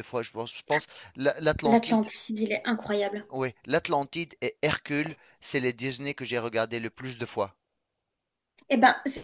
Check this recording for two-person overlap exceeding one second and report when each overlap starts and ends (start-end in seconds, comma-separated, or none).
none